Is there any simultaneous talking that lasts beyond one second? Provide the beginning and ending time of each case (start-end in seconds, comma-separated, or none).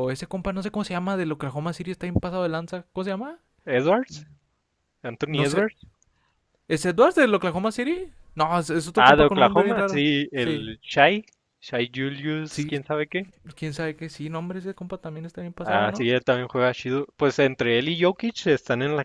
8.9-10.7